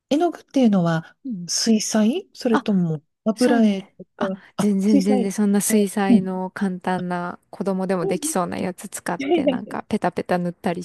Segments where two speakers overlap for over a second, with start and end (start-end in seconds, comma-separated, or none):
3.4-5.3